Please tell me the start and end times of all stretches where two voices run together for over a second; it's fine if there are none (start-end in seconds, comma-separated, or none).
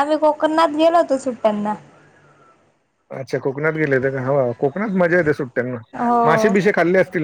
none